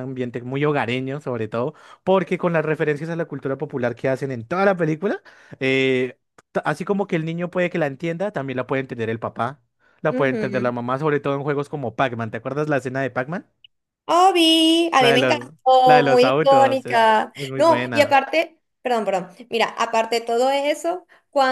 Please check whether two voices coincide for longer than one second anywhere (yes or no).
yes